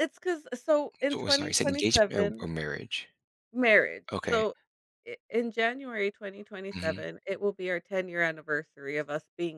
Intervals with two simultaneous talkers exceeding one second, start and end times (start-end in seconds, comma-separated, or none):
1.1-2.5